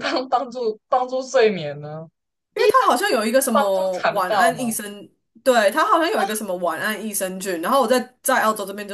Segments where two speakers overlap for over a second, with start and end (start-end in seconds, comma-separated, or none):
2.5-4.7